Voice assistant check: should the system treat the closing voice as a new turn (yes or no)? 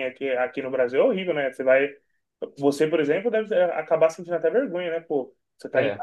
no